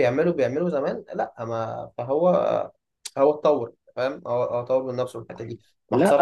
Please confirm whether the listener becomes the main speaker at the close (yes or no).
yes